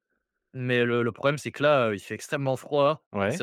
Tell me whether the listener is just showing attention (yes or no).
yes